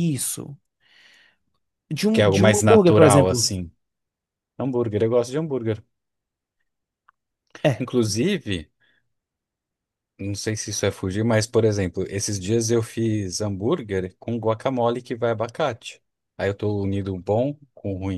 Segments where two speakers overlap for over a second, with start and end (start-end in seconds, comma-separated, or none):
2.1-3.5